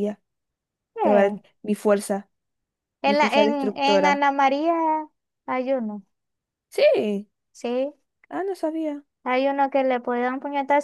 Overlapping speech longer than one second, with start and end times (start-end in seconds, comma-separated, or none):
3.0-4.2